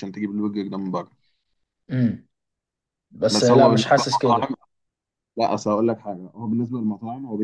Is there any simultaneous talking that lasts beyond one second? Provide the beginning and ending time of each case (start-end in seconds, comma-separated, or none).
3.3-4.5